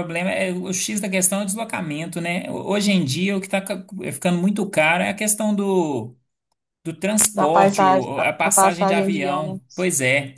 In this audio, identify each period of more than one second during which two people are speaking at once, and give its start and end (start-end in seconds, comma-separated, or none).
7.3-9.8